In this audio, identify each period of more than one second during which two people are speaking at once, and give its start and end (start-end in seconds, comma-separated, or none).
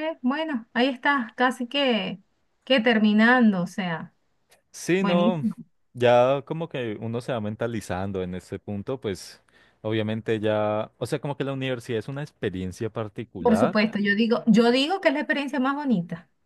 none